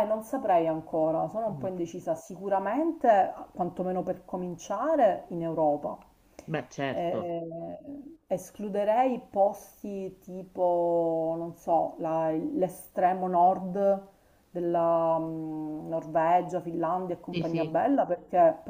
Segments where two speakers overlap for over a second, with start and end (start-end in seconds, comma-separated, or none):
none